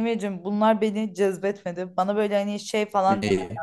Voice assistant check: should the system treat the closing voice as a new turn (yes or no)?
no